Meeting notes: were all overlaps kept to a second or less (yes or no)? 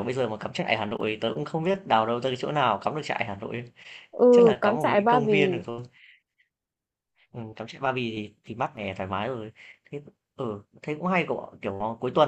no